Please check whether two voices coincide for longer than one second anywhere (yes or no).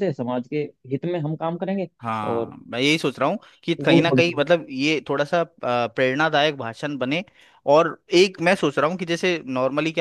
no